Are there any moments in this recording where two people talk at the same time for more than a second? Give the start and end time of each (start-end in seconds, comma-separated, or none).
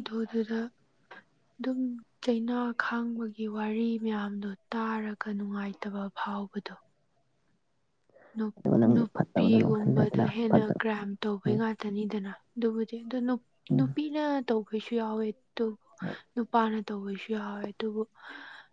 8.9-10.8